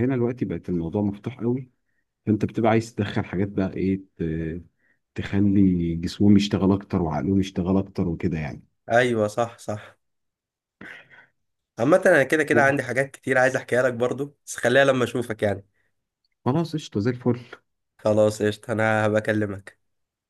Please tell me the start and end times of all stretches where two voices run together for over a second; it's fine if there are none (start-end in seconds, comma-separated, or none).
none